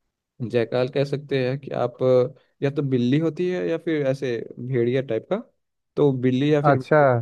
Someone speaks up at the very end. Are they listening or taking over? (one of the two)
listening